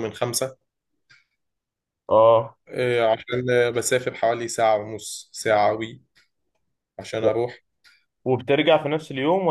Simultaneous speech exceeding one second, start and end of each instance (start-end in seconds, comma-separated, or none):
none